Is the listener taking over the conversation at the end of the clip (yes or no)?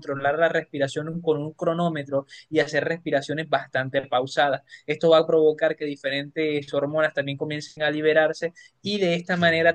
no